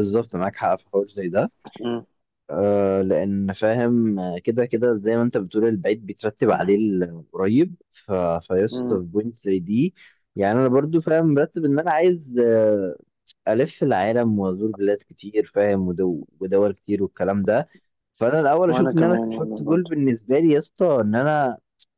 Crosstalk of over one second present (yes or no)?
yes